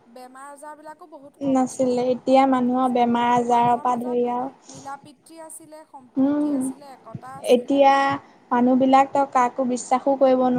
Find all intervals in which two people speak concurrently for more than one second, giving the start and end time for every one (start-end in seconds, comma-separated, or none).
2.7-4.5